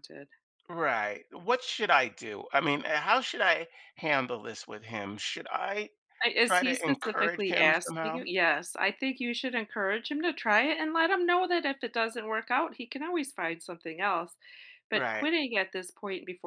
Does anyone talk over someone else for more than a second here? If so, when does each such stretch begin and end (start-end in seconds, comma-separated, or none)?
6.4-8.2